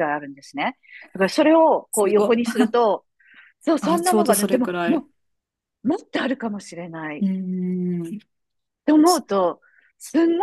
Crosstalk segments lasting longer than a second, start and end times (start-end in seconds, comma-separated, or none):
3.8-5.0